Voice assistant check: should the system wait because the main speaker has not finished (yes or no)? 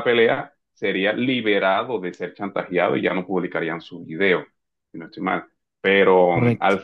yes